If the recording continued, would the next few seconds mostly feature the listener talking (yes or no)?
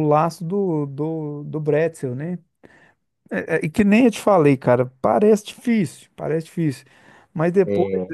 no